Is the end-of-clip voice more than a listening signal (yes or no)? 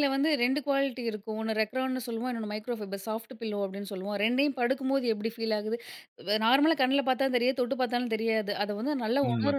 no